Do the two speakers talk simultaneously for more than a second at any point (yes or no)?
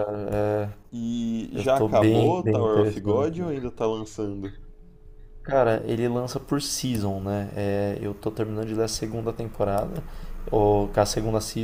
yes